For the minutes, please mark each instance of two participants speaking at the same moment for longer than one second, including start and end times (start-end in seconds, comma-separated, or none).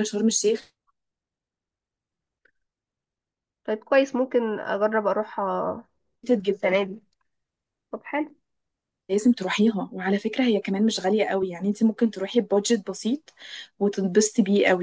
none